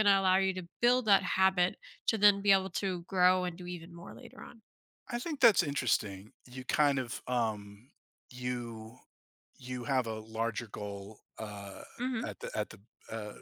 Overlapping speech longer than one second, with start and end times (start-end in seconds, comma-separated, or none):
none